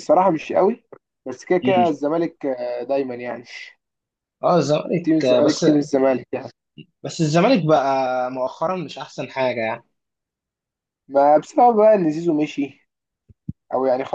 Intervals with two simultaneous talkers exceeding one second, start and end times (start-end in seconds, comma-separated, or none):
none